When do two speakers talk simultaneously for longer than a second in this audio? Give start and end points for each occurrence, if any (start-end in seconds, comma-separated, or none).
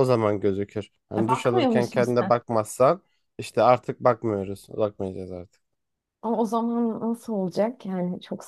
1.2-2.4